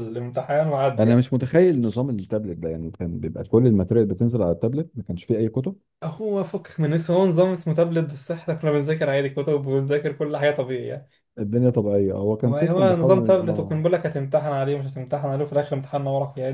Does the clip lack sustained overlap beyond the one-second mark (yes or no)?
no